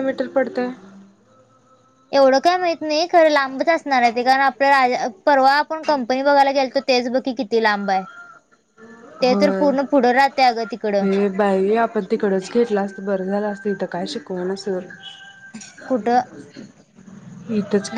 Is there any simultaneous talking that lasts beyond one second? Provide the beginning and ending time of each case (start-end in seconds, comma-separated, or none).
none